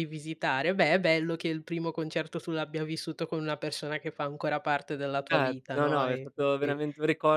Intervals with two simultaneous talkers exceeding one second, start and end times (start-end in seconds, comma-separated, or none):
5.3-6.8